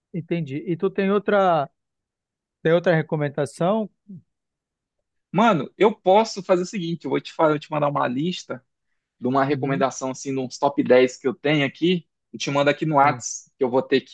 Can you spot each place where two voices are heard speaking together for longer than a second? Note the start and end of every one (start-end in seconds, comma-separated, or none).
none